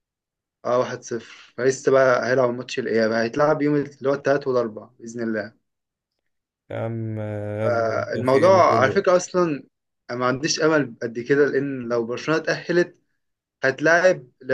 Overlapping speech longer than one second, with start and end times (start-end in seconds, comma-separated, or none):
7.6-9.0